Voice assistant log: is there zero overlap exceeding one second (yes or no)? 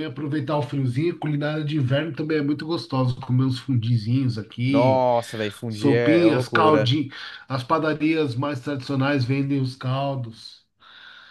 no